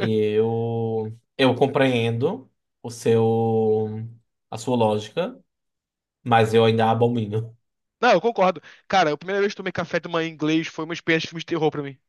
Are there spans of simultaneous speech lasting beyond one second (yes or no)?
no